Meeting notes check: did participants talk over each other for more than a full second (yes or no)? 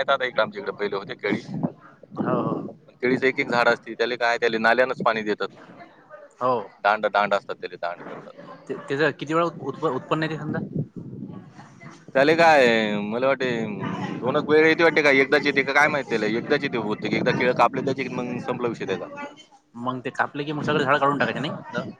no